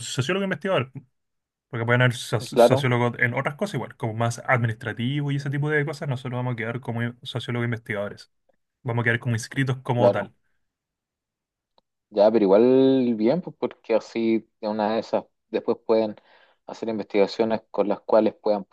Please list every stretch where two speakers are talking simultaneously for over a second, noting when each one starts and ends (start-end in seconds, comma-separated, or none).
none